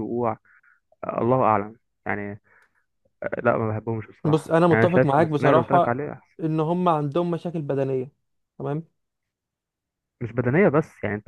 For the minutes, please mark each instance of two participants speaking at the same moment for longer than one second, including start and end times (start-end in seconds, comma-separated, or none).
4.2-6.0